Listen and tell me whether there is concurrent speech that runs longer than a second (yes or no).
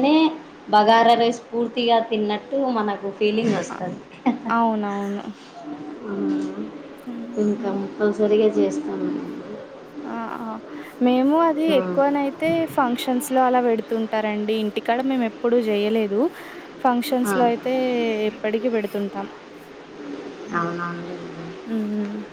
no